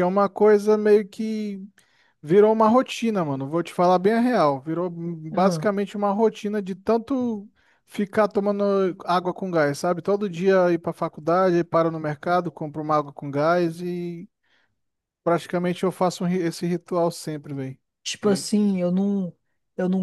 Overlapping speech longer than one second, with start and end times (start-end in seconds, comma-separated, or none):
none